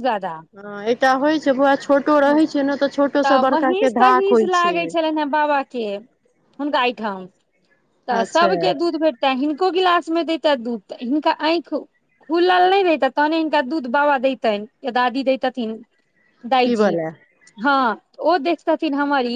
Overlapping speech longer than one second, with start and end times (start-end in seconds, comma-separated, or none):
none